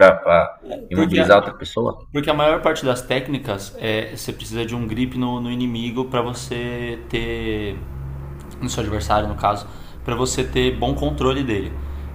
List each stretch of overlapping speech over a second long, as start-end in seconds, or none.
none